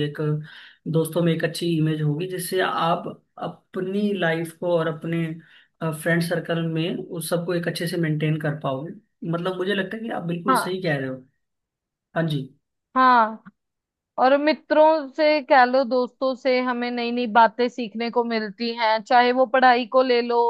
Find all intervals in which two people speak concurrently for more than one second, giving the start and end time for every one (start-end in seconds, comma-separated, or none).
none